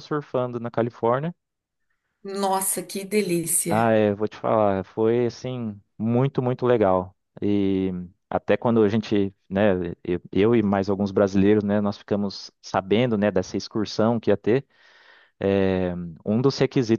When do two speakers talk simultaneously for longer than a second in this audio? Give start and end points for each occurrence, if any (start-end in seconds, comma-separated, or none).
none